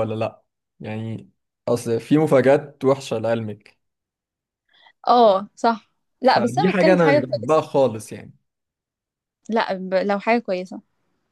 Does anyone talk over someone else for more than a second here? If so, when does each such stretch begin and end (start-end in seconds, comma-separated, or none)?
6.2-7.6